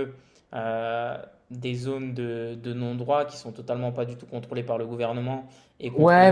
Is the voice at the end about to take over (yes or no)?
yes